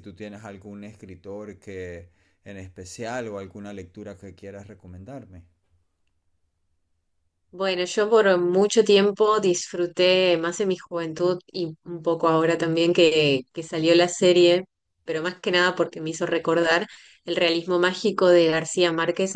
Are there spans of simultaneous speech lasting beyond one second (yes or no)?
no